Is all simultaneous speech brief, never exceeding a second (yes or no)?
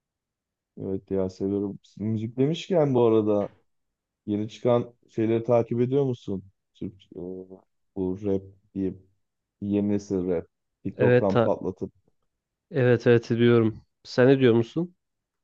yes